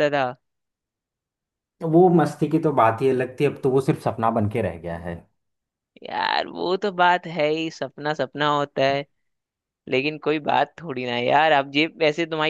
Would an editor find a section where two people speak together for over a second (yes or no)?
no